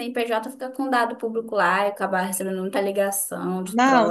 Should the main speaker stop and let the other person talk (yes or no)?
yes